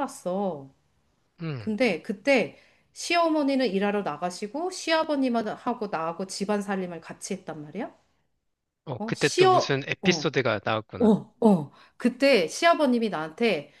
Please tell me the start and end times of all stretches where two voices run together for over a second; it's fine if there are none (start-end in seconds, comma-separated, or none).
9.0-10.3